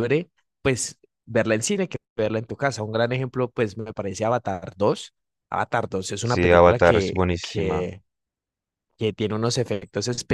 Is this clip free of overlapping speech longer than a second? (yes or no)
no